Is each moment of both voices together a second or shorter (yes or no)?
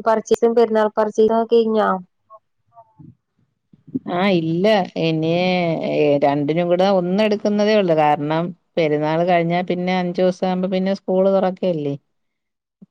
yes